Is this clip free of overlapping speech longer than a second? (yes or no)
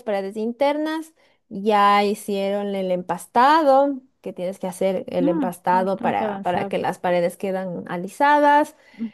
no